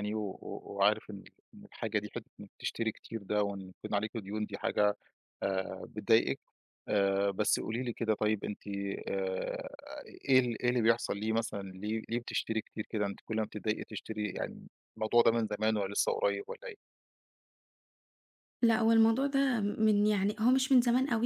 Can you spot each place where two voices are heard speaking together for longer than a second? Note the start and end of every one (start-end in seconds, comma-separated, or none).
none